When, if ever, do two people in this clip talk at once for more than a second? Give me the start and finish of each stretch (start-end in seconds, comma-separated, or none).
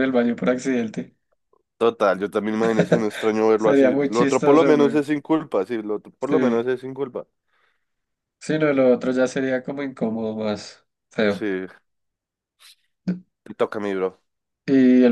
3.5-5.0